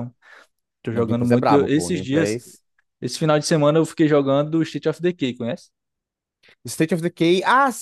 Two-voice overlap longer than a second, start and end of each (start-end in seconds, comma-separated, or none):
0.9-2.4